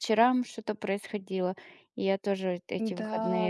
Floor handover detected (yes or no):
no